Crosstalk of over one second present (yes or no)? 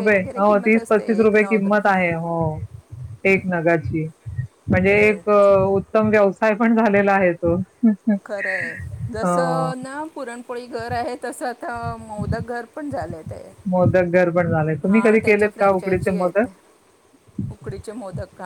yes